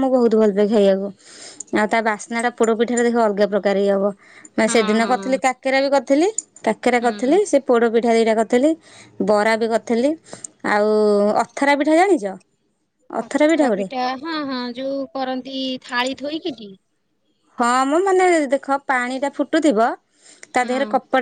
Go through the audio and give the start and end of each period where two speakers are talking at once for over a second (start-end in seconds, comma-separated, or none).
none